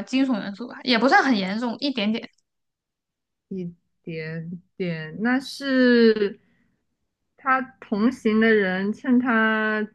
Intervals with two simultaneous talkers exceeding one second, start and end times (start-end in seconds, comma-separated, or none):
none